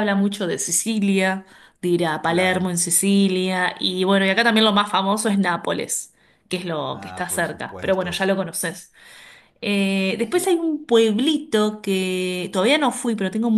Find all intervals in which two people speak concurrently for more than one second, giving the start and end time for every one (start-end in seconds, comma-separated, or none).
6.9-8.2